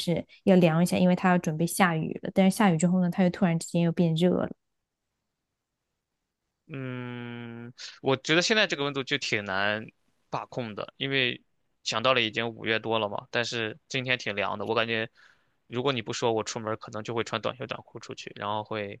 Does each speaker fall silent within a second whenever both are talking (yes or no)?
yes